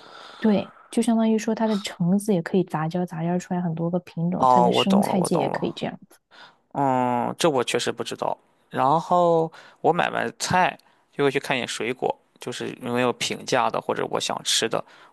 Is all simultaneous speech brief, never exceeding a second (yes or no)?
no